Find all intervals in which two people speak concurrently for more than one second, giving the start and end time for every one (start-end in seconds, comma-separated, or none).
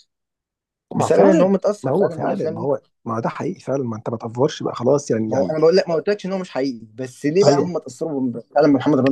1.0-2.7